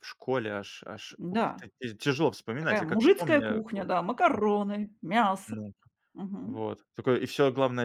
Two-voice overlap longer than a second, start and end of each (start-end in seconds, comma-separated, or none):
2.6-3.9